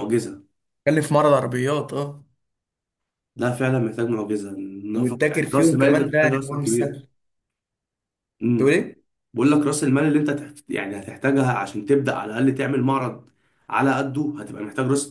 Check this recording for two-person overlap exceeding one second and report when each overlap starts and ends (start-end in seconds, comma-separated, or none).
5.0-7.0